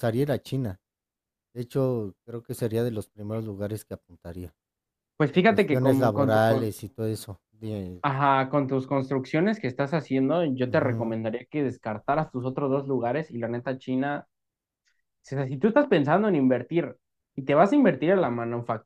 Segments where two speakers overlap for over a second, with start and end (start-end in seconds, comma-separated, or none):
5.3-6.7